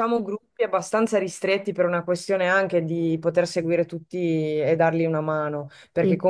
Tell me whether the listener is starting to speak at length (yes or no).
no